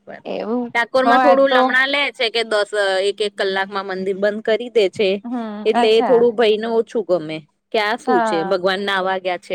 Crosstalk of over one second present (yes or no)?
no